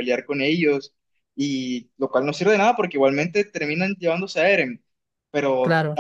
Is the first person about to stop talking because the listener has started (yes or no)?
no